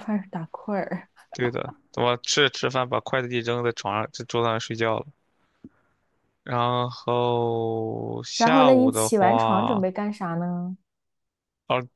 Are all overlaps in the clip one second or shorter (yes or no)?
no